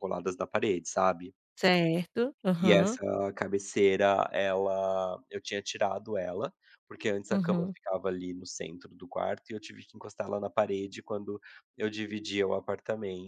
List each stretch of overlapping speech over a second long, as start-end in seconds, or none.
none